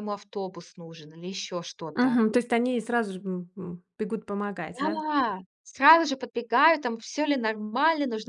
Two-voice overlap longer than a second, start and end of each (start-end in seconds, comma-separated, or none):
none